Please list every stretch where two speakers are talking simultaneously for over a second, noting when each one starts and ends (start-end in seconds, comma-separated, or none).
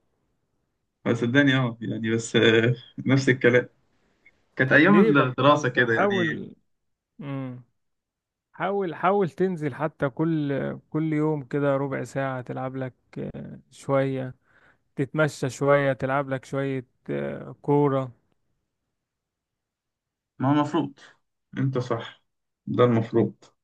4.7-6.4